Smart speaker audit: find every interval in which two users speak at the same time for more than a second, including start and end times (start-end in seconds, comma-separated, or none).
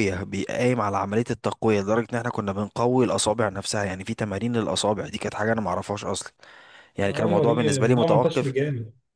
7.1-8.5